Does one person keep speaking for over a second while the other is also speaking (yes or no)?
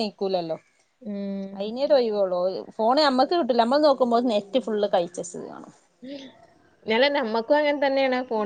no